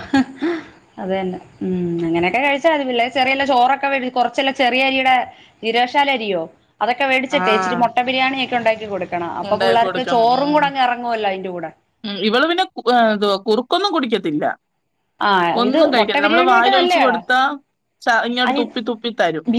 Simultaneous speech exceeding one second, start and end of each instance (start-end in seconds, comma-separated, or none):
15.6-17.2